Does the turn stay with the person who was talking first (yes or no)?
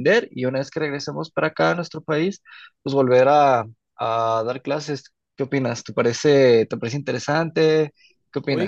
no